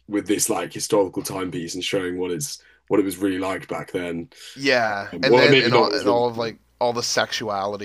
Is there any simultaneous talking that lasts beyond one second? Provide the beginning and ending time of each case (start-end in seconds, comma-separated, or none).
5.1-6.5